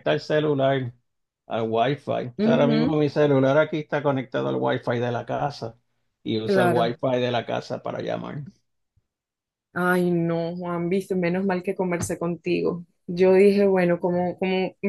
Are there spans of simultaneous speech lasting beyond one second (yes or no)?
no